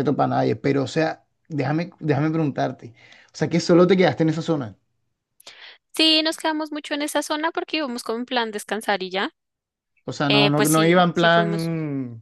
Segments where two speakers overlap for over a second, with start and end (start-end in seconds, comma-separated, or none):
10.3-11.7